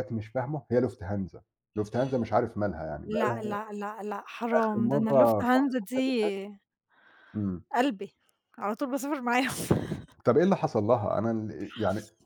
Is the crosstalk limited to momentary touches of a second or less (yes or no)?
no